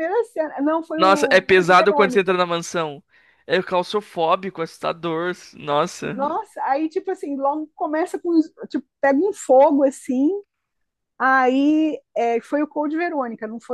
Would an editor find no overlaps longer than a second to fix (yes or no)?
no